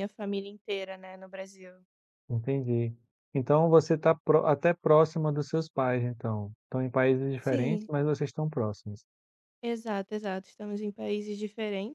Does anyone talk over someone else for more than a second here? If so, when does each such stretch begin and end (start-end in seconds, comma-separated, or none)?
none